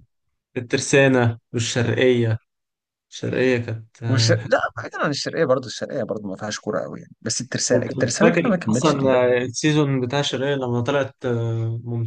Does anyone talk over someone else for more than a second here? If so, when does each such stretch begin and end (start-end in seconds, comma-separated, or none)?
7.7-9.3